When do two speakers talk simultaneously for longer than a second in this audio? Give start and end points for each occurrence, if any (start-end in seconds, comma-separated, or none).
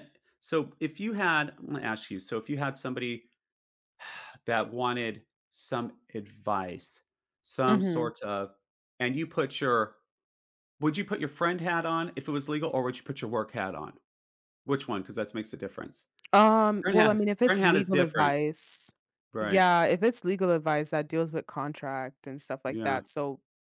16.8-18.3